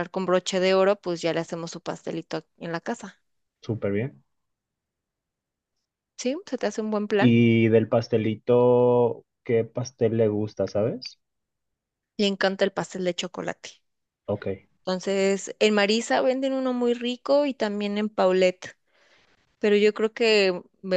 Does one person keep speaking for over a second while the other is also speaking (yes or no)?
no